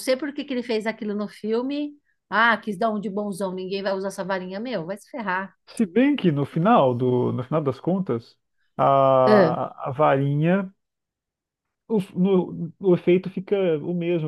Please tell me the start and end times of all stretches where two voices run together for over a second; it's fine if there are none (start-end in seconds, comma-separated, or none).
none